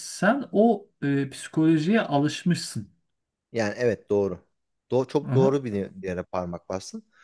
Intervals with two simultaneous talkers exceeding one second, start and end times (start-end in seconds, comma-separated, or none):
none